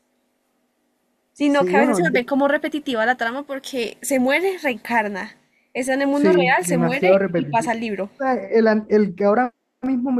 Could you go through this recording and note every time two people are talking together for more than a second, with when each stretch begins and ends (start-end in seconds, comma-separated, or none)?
6.1-8.1